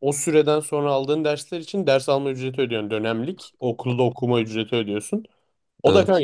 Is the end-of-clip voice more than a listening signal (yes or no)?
no